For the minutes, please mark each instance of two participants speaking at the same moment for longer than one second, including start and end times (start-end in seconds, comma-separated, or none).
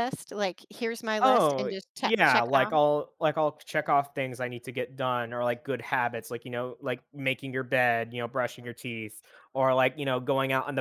1.2-2.7